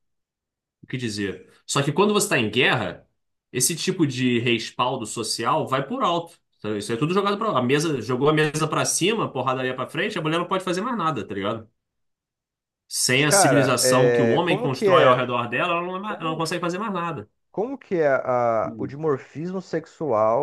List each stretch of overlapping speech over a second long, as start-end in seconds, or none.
13.1-15.2